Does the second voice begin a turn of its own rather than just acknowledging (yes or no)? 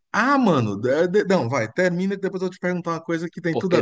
yes